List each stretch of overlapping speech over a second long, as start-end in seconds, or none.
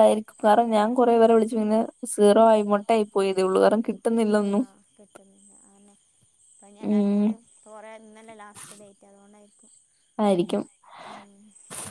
none